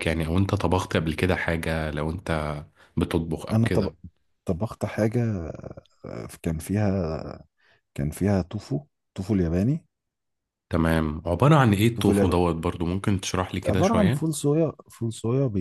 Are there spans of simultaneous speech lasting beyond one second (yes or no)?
no